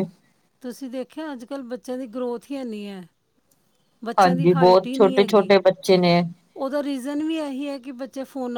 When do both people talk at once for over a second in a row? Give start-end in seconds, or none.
4.2-5.5